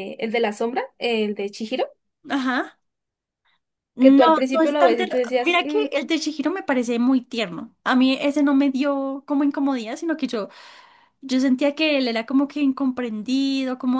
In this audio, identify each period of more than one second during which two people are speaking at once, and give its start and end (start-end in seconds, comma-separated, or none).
4.0-5.8